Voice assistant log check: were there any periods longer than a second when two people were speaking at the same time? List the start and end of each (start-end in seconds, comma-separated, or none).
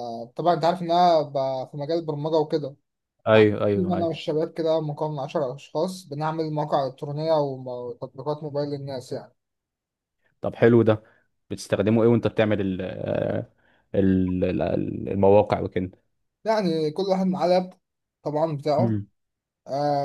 none